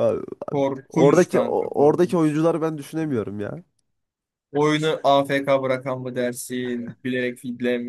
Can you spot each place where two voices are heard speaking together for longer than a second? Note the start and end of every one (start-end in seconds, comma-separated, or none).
0.9-2.4